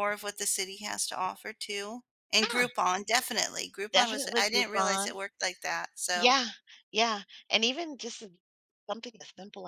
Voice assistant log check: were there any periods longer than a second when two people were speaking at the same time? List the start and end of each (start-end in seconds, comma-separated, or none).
3.9-5.2